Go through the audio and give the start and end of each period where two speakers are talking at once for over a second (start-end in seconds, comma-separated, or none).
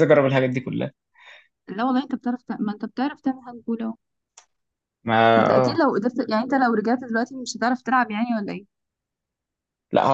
none